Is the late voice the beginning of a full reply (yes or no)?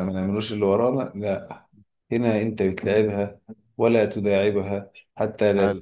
no